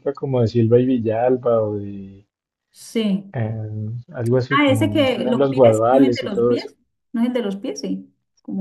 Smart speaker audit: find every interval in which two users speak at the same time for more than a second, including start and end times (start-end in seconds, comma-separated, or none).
4.5-6.7